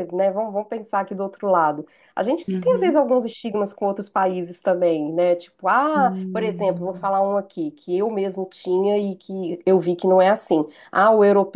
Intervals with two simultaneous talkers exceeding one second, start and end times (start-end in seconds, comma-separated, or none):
5.7-7.1